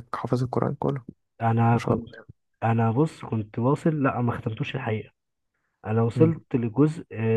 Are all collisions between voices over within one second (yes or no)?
yes